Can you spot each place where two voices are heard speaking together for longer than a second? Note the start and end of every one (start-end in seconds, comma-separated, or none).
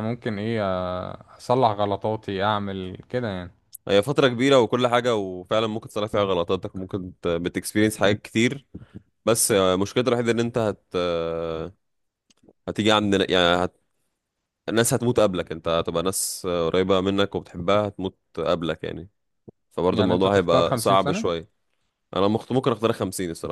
19.9-21.3